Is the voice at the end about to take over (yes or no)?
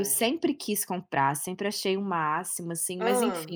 no